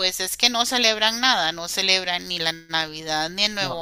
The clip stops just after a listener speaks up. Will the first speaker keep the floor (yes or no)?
yes